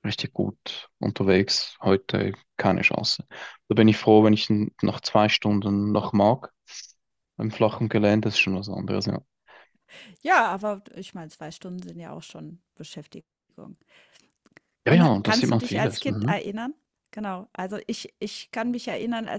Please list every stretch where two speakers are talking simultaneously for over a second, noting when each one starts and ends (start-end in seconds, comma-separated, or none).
14.9-16.4